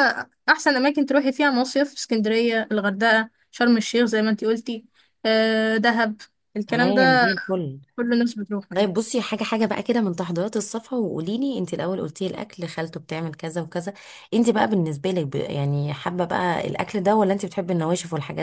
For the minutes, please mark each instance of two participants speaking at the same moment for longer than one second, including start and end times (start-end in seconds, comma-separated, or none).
none